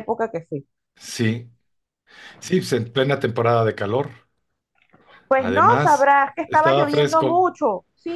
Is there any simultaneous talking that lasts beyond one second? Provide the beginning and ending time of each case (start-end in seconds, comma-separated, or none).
5.4-7.5